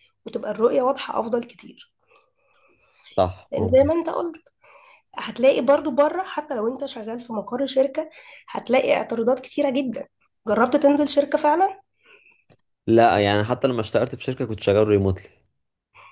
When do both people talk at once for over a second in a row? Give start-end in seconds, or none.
none